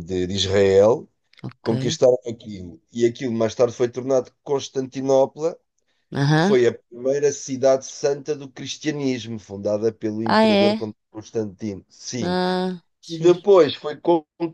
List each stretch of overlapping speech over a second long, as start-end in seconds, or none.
none